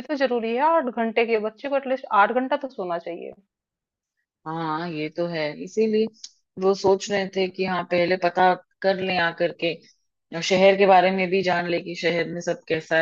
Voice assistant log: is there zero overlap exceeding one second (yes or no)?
yes